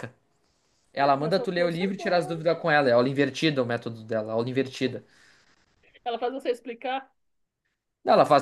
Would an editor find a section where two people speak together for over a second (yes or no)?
yes